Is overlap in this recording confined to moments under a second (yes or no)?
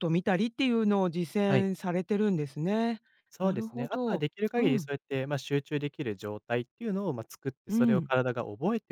no